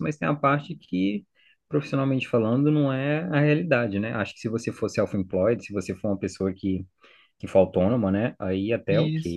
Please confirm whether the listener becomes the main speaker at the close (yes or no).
no